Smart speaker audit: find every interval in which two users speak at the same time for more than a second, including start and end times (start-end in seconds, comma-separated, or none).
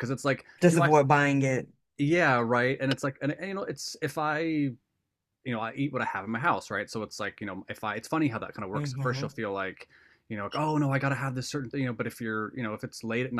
none